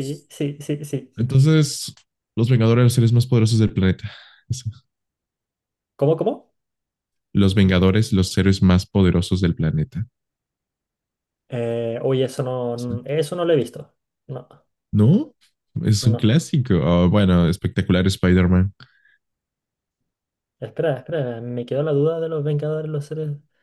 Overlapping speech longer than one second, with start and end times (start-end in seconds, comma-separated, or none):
none